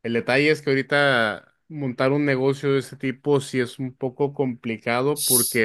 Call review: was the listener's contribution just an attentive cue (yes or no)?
yes